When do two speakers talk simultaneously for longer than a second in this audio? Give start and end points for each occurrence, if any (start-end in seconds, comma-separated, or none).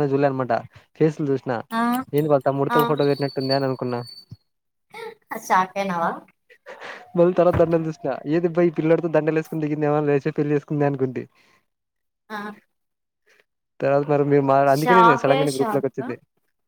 14.8-16.1